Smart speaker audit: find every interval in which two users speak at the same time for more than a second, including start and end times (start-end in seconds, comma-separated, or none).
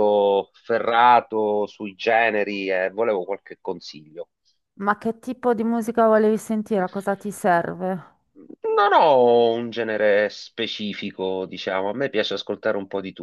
none